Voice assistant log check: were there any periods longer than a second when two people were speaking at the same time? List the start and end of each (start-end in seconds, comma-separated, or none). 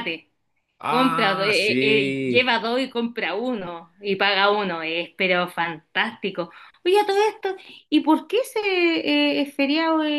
0.8-2.6